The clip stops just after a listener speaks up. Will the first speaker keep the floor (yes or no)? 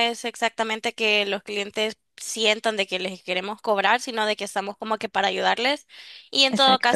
yes